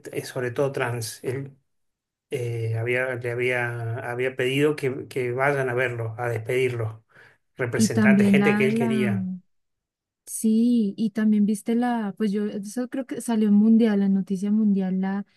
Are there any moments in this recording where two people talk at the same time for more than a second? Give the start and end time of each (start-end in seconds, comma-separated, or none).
7.8-9.2